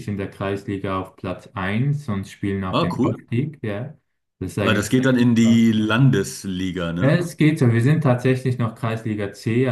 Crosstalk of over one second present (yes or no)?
no